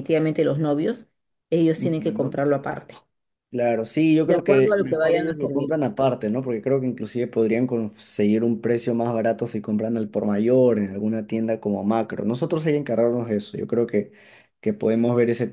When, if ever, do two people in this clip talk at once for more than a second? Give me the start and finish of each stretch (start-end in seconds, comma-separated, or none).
4.2-5.7